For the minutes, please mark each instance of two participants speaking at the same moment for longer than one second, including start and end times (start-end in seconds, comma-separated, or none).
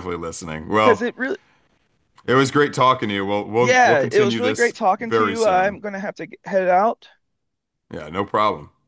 3.6-5.8